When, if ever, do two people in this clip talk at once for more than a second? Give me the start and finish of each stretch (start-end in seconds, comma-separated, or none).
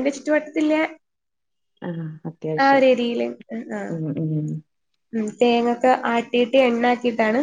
none